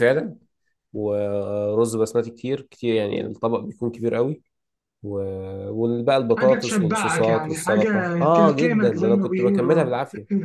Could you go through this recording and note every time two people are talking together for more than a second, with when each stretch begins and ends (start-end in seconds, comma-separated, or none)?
6.4-9.9